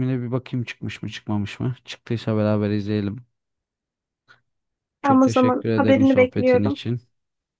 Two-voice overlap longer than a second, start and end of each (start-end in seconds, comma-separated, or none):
5.0-6.8